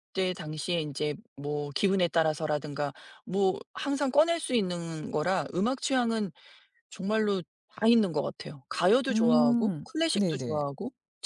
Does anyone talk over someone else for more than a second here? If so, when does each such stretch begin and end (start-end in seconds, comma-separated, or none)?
9.1-10.6